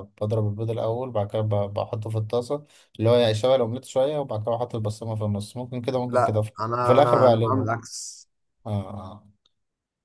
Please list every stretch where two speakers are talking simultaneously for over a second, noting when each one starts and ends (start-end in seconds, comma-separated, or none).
6.1-7.7